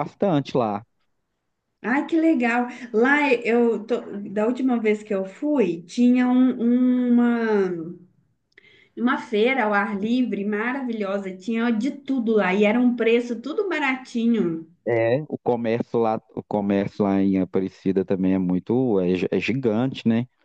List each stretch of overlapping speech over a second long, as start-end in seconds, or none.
none